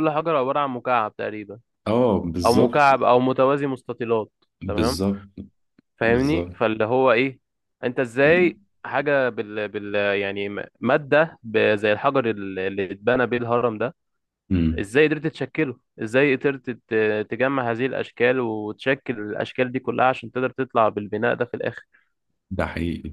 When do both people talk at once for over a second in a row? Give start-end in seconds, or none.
none